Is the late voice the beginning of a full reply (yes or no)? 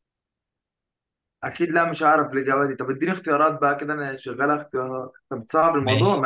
yes